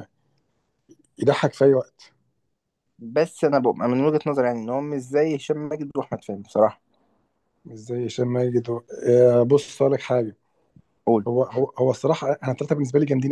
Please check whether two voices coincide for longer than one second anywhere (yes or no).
no